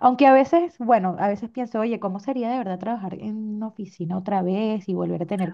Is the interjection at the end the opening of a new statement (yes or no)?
no